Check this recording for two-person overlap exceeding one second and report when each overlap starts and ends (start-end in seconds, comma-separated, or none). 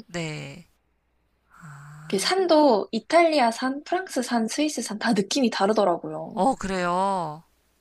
none